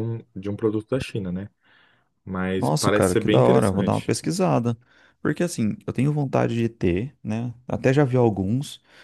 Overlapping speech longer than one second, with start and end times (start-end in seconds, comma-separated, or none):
2.6-4.1